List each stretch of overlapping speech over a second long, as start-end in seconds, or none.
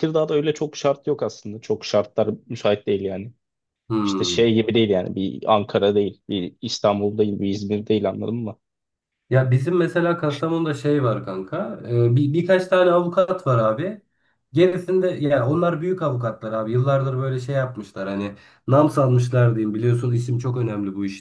none